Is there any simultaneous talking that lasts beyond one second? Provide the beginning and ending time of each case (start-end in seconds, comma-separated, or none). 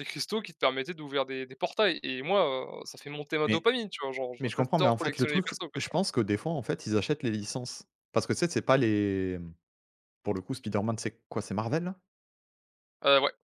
4.4-6.0